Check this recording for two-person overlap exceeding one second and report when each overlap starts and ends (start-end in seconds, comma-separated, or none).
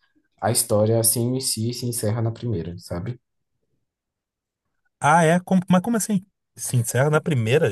none